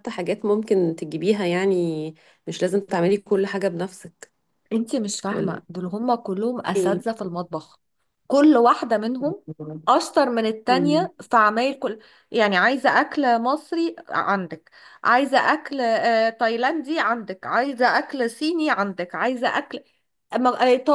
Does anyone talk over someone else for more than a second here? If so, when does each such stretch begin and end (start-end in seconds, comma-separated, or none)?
none